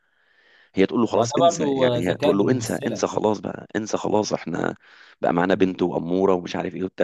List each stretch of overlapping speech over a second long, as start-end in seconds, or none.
1.1-3.0